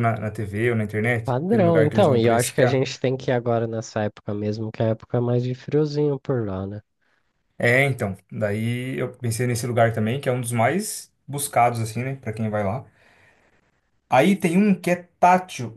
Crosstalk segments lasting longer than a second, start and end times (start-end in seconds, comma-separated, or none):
1.2-2.9